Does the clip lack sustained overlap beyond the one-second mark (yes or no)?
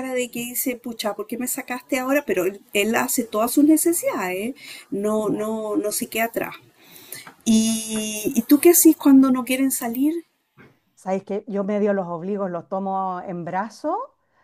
yes